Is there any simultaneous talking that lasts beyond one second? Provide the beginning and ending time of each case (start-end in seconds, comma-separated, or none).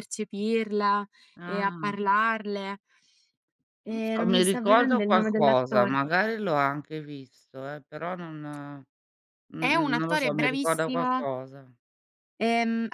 3.9-6.0, 9.6-11.2